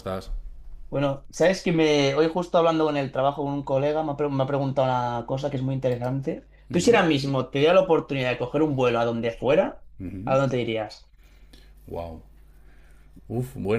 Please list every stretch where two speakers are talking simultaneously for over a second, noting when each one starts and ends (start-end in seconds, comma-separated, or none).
none